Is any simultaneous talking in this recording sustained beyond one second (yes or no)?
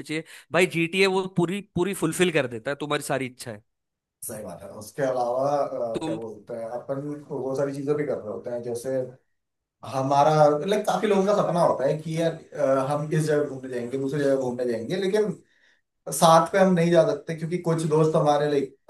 no